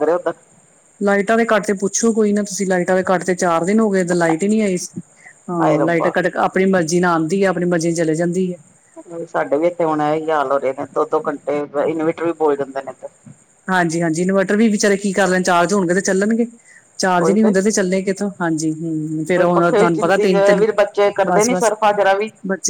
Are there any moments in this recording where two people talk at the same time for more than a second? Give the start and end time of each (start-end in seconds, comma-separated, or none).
19.3-20.6